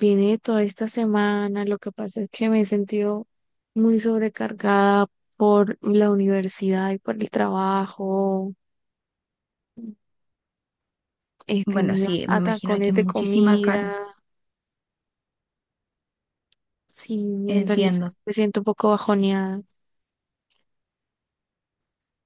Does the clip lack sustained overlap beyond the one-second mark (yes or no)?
no